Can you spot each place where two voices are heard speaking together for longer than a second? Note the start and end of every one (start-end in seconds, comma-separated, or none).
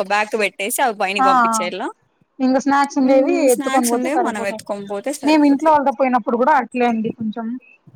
3.1-4.7